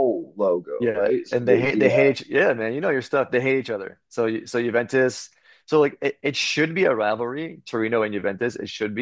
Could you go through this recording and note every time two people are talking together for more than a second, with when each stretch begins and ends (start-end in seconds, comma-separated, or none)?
0.8-2.1